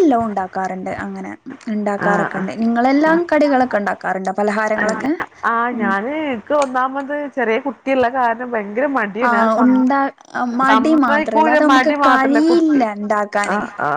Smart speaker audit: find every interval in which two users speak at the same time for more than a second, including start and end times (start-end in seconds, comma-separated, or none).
10.7-12.8